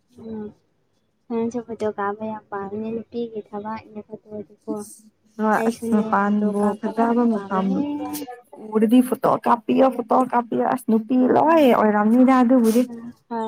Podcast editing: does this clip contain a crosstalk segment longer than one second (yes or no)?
yes